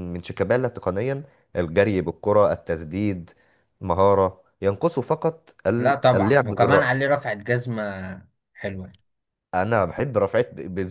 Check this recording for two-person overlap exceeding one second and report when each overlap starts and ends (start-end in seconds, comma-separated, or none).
5.8-7.0